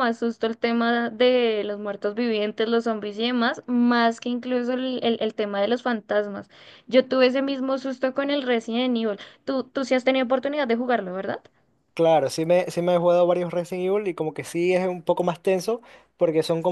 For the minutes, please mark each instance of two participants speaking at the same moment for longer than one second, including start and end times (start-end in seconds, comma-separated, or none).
none